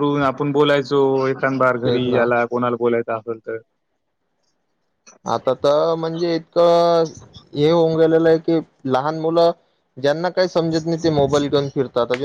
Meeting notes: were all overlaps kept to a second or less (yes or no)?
yes